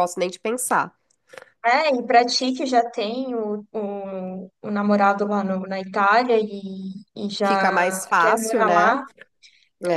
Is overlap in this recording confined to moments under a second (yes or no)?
no